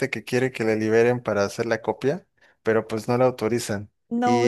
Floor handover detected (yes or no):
yes